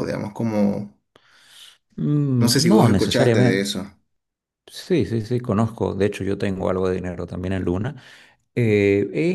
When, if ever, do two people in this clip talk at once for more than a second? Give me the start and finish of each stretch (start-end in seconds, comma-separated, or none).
2.4-3.7